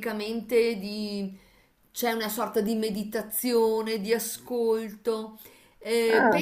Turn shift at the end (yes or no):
no